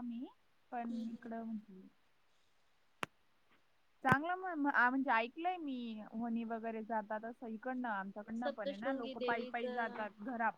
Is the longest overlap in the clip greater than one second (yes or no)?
yes